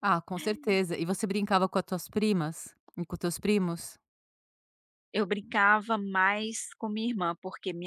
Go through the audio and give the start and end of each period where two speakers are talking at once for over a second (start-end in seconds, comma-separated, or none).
none